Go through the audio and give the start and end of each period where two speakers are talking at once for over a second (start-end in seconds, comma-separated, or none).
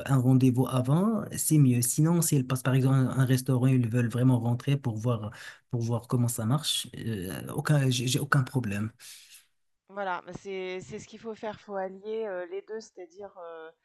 none